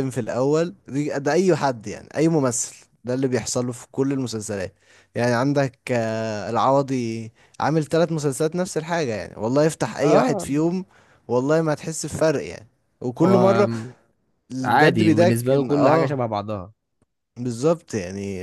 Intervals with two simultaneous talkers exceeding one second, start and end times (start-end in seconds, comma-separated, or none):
14.6-16.2